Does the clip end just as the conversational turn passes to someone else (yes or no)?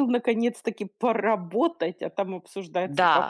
yes